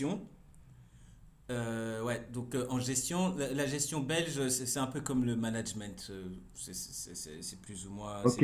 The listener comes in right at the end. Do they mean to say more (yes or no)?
yes